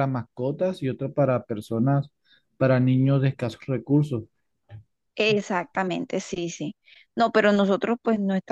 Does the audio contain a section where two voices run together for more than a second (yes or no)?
no